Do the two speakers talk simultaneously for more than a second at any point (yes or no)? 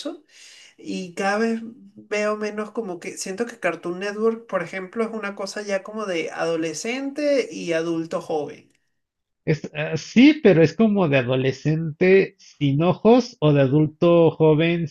no